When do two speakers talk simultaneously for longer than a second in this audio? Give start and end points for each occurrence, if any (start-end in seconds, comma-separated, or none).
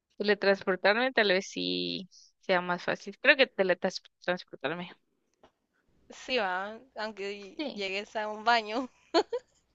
none